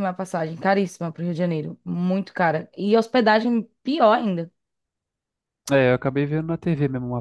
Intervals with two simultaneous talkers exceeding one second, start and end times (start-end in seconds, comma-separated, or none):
none